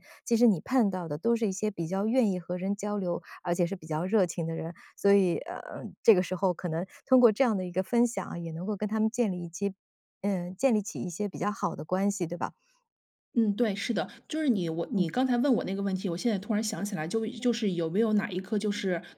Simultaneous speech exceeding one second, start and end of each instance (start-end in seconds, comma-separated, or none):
none